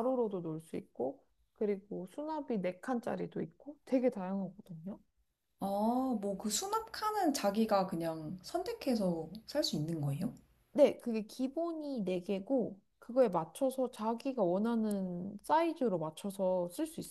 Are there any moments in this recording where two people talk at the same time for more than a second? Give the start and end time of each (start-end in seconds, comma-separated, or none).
none